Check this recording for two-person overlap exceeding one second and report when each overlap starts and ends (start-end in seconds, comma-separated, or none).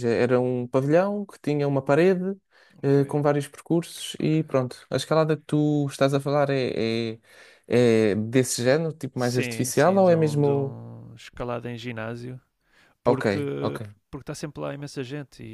9.1-10.8